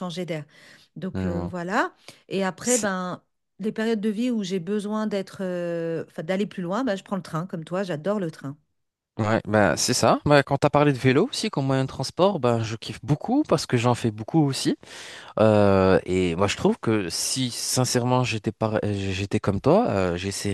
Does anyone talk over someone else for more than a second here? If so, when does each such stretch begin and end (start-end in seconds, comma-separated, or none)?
none